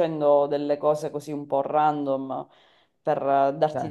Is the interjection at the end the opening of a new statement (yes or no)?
no